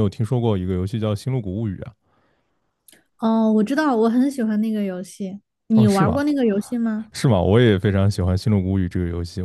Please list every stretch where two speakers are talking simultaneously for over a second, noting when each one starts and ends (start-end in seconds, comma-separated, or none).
none